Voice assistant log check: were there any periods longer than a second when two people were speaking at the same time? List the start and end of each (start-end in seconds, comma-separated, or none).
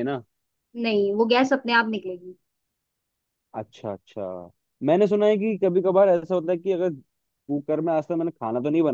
none